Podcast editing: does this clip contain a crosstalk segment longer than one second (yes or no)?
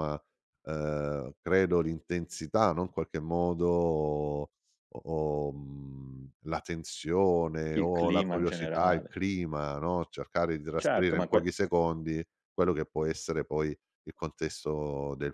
yes